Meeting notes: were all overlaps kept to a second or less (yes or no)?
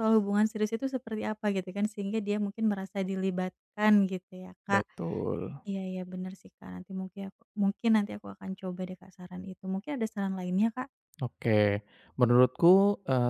yes